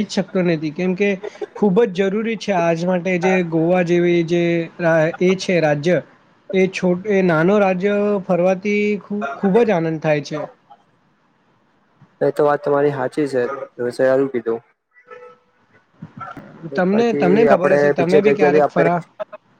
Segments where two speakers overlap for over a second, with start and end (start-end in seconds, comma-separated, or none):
16.9-18.9